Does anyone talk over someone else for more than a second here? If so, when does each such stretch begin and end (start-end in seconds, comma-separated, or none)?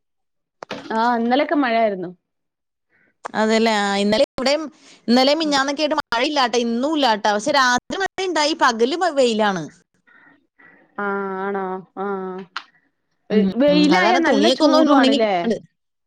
13.6-15.3